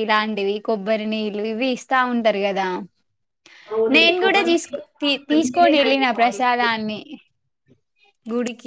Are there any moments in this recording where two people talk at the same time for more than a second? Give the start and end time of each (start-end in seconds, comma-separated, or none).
3.9-6.7